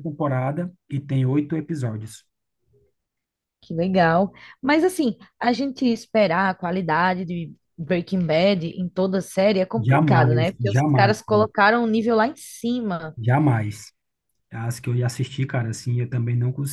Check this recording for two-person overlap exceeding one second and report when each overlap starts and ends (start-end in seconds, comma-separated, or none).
9.8-11.1